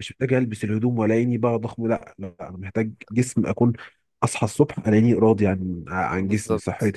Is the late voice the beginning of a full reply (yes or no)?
yes